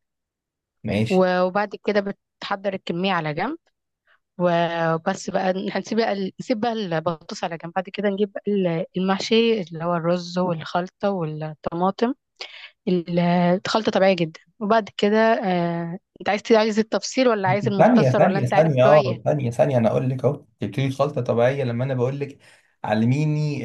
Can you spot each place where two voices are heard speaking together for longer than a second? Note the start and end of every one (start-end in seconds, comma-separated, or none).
17.8-19.2